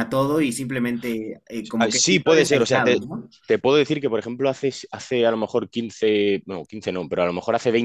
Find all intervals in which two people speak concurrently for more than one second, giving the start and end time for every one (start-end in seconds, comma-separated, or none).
1.8-3.0